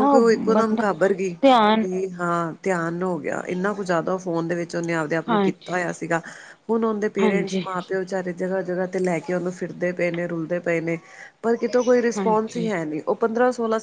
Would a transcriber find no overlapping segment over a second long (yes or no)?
yes